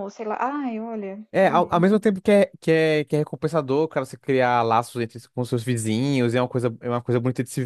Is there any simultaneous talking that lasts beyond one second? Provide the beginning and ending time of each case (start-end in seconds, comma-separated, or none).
none